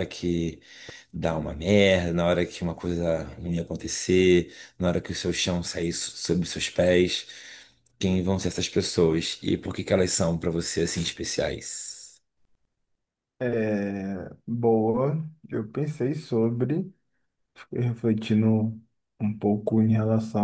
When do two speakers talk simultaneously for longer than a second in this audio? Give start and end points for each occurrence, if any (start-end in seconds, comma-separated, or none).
none